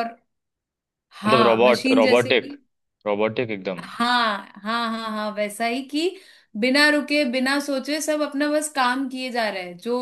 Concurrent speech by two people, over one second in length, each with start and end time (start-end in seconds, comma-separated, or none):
1.2-2.5